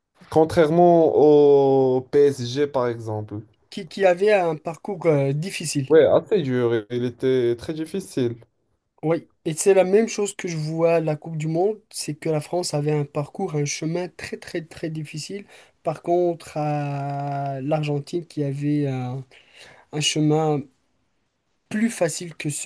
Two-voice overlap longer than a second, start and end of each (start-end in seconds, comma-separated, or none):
none